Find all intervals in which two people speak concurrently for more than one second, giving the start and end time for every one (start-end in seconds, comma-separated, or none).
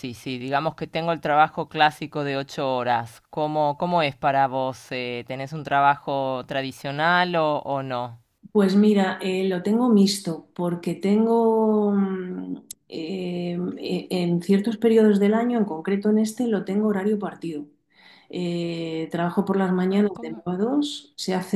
none